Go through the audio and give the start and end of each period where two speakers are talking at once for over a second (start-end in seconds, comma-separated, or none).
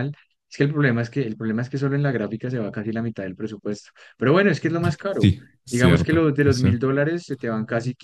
5.1-6.8